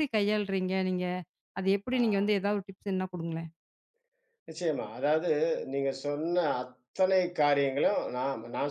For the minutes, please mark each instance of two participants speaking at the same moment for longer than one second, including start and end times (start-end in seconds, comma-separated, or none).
none